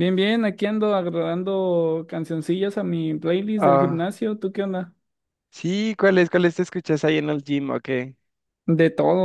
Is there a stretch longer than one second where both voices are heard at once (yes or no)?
no